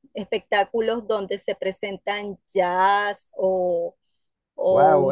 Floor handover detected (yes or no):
yes